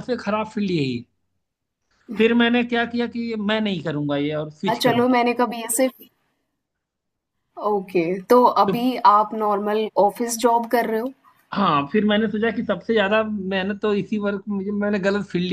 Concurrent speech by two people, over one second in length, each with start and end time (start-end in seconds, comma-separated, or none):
none